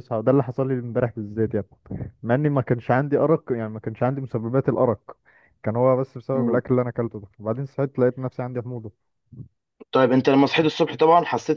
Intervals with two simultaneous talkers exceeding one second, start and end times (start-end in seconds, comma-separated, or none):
none